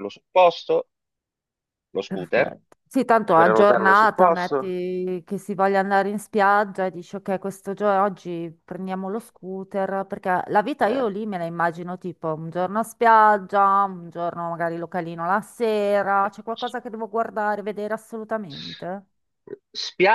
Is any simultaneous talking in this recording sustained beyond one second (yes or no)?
yes